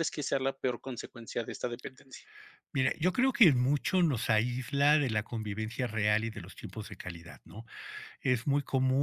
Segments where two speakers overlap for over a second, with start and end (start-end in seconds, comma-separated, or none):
none